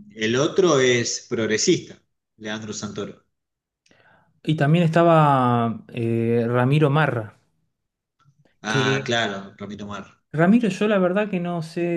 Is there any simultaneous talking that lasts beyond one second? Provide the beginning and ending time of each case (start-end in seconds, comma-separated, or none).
none